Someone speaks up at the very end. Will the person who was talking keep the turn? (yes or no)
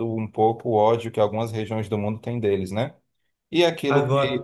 yes